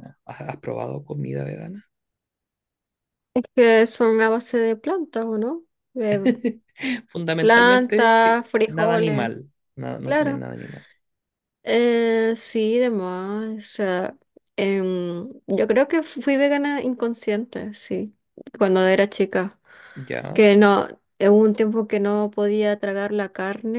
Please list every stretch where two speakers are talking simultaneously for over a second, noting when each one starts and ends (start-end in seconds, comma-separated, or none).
7.4-9.3